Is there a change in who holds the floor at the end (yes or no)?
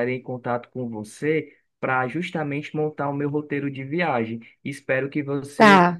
no